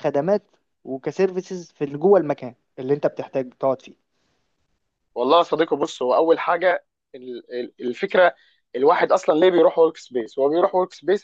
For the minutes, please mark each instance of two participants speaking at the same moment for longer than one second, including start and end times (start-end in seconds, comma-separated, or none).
none